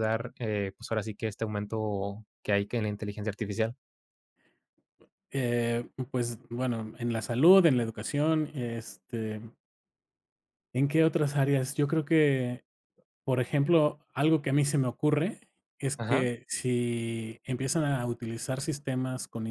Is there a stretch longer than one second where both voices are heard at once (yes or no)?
no